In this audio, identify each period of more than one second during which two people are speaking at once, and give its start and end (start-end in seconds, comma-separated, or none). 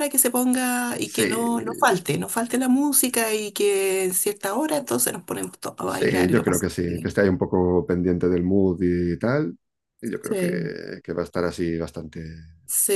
5.9-7.2